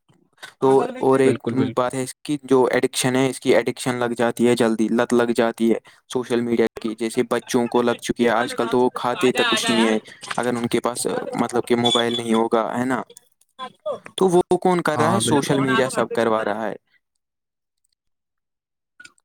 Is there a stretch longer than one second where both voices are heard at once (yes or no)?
yes